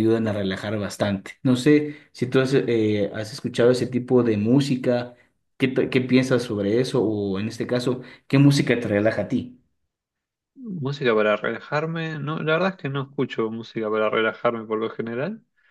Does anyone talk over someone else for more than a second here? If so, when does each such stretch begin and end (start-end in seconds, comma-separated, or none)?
none